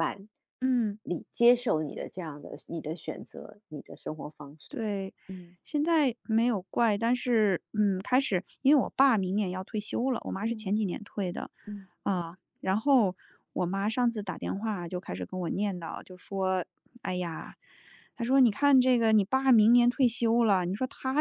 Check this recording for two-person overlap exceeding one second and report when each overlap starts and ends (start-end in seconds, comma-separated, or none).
none